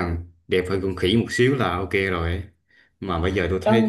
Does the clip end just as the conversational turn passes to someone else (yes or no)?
no